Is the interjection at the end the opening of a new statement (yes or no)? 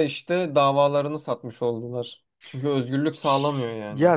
yes